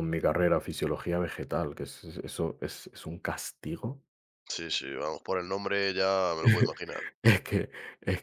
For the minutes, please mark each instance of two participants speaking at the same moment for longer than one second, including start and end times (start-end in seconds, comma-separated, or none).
none